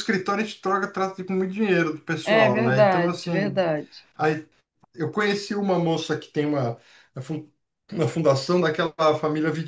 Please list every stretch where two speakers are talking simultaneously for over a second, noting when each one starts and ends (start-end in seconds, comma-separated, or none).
2.2-3.6